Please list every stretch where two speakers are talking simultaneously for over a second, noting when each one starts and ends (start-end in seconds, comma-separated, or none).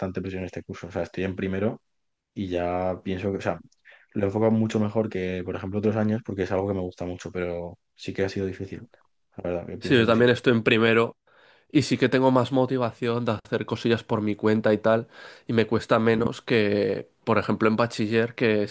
none